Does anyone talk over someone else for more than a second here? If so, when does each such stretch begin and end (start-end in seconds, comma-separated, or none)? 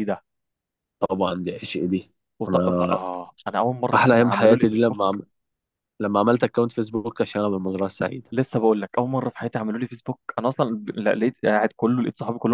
3.9-5.2